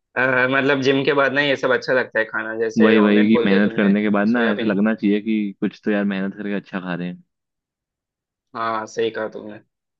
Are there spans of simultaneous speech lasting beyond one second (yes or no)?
yes